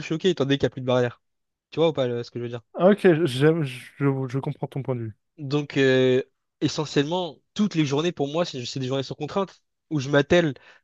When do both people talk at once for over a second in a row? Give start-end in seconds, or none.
none